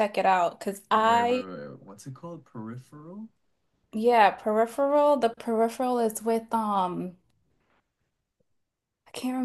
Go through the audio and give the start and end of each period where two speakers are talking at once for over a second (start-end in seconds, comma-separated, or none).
none